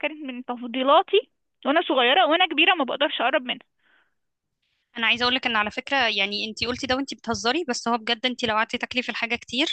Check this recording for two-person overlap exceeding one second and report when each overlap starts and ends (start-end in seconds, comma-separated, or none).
none